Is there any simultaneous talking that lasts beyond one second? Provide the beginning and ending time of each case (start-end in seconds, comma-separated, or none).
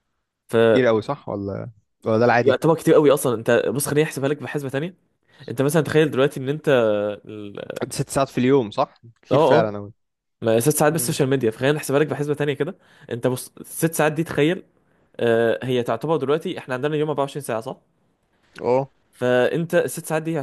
none